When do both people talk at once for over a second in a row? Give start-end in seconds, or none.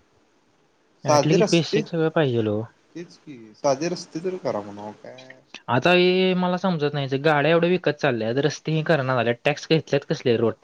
1.1-2.6